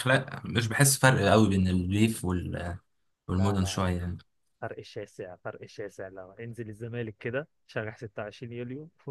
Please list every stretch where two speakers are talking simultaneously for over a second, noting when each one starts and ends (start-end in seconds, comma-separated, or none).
none